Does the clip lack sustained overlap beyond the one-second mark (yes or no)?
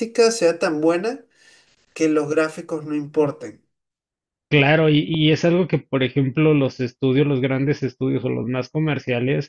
yes